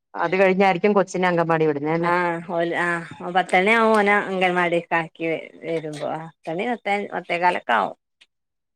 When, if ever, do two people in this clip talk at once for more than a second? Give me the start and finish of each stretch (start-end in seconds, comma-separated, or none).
none